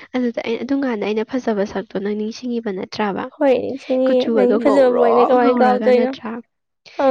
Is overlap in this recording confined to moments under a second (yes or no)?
no